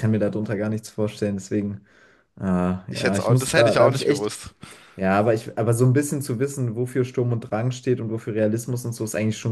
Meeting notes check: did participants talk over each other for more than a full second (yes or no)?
yes